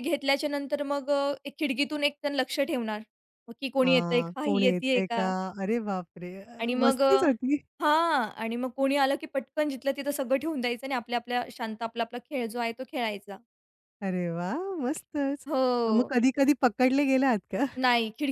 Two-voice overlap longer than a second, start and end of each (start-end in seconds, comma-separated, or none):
3.8-5.2